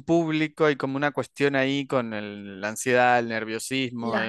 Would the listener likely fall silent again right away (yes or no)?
yes